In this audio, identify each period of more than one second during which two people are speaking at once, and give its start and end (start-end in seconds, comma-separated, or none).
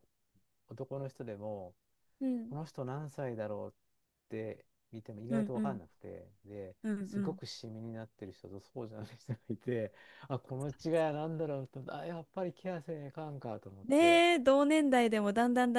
none